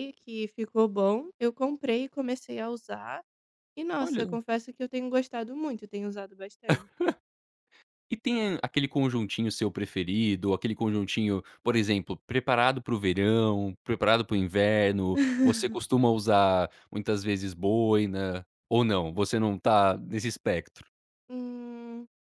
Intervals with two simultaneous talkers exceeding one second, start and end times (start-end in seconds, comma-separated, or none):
none